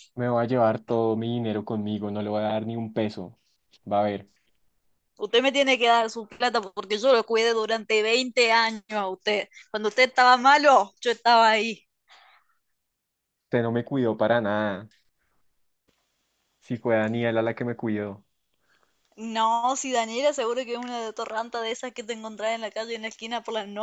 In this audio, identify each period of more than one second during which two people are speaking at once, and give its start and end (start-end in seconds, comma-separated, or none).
none